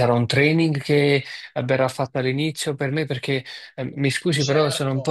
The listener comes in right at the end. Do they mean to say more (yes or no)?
no